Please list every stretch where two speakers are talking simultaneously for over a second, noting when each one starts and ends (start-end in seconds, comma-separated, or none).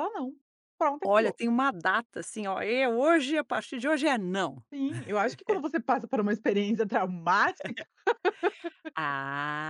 none